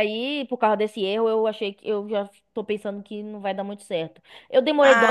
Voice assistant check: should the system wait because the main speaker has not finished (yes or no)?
yes